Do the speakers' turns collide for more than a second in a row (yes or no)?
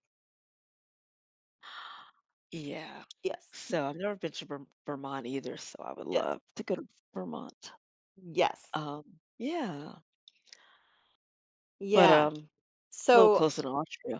no